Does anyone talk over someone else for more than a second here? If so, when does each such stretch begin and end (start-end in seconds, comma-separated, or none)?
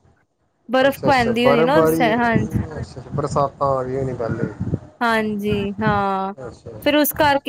0.9-2.1